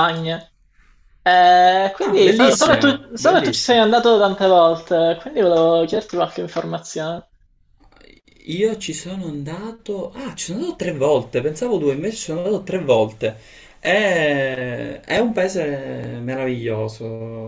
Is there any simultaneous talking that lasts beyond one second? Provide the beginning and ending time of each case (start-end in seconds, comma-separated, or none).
2.0-3.8